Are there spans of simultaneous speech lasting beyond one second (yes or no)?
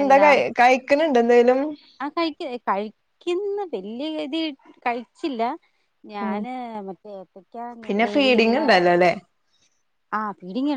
no